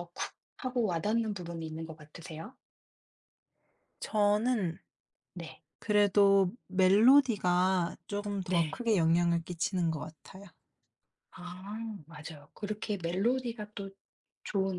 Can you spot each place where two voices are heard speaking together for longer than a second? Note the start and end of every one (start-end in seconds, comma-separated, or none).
none